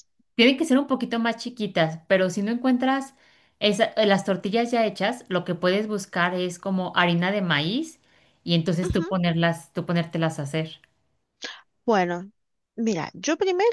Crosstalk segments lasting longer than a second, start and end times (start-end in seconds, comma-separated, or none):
none